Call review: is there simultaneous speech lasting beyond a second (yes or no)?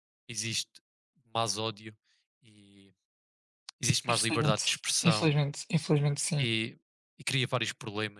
yes